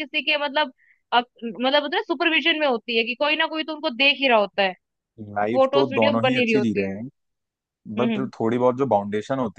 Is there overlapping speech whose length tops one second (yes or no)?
yes